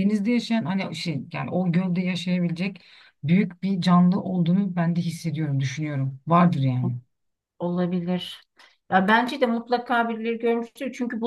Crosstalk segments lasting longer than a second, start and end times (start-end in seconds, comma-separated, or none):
none